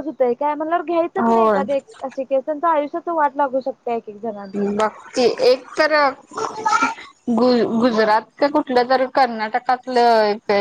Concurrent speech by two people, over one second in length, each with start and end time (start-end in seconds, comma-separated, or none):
none